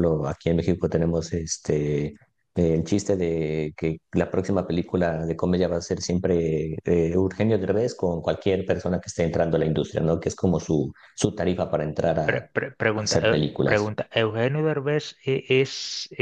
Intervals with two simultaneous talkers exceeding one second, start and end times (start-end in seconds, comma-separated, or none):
12.2-13.9